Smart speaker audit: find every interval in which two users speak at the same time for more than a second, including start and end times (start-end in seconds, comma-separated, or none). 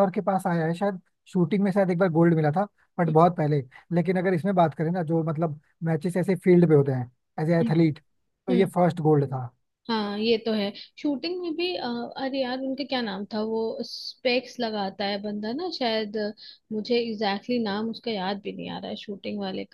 none